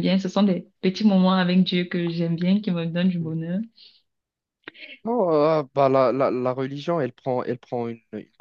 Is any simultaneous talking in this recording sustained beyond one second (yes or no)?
no